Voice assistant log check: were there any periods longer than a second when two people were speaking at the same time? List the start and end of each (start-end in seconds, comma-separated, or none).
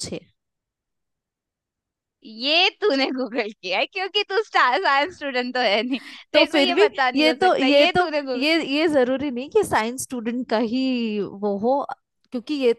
6.3-8.4